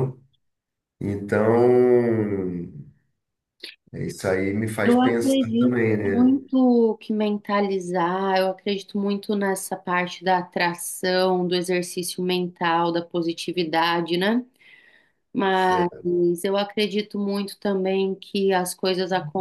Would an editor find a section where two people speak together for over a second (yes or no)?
yes